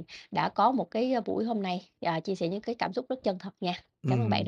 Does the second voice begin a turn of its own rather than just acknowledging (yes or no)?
yes